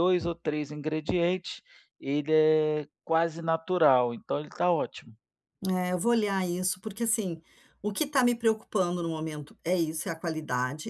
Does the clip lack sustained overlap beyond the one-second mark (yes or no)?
yes